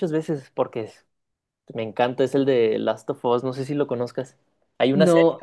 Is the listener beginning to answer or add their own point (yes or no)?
yes